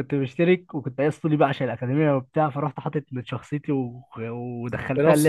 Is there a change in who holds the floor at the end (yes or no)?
no